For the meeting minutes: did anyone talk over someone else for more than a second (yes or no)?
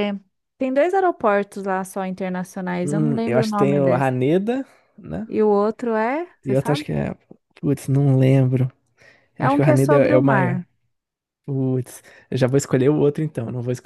yes